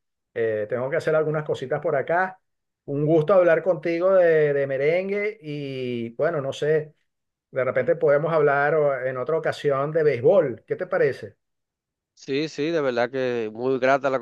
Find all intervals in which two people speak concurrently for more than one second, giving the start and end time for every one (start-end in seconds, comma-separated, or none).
none